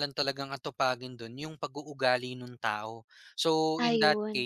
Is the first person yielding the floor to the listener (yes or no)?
no